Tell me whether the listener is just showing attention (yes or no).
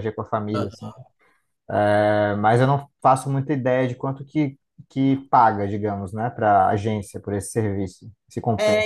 no